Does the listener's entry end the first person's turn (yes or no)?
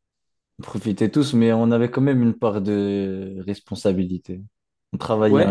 yes